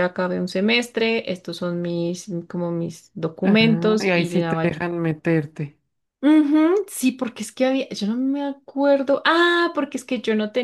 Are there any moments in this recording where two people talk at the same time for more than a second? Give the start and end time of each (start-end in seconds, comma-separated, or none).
3.4-4.7